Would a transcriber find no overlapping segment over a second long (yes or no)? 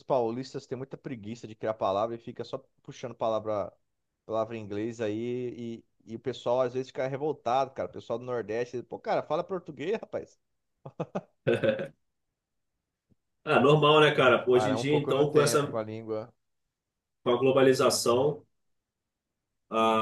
no